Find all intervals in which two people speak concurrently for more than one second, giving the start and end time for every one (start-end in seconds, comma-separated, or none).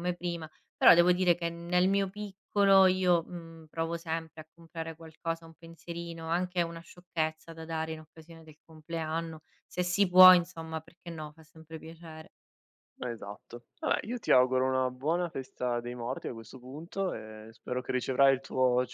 none